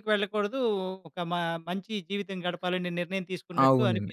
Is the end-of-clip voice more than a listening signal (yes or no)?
yes